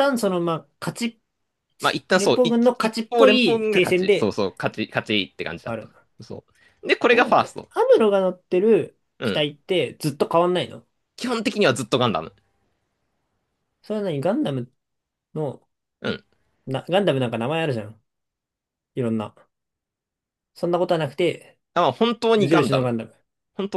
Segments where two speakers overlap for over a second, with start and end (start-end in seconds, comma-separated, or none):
2.1-4.3